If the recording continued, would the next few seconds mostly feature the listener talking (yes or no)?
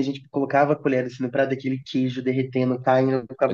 yes